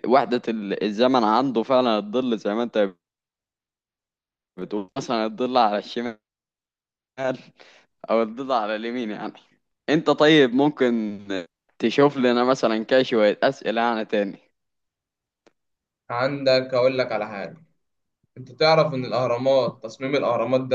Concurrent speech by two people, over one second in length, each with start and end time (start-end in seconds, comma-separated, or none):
none